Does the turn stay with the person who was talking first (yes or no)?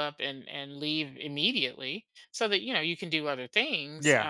yes